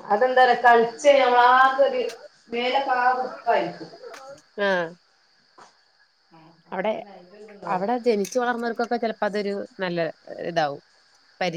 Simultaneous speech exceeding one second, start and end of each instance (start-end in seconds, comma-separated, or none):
none